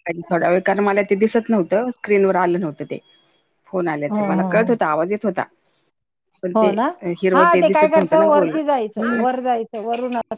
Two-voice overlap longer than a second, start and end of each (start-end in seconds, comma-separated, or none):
7.3-9.2